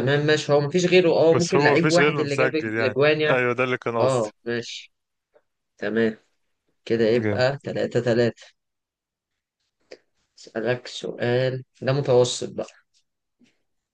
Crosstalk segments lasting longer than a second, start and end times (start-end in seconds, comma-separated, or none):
1.3-3.4